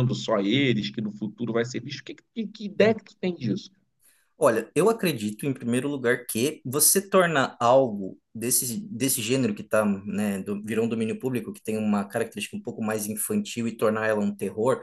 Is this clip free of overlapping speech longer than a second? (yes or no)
yes